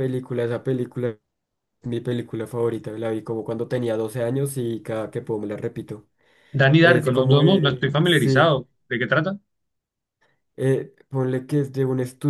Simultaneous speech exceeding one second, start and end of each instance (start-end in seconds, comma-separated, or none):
6.8-8.6